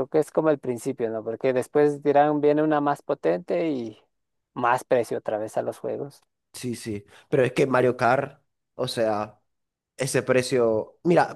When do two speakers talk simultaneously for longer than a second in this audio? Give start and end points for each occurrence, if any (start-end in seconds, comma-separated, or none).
none